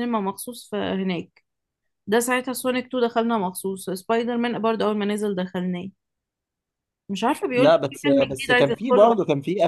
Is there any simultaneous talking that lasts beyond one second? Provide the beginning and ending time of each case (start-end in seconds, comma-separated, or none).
7.5-9.1